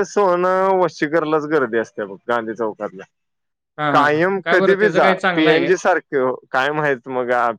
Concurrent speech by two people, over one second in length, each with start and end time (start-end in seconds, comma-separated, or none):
3.9-5.7